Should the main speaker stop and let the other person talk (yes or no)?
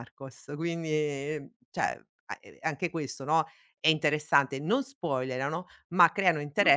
no